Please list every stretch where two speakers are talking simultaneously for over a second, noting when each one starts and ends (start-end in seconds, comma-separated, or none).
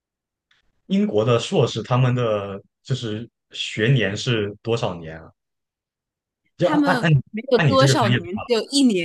6.6-8.4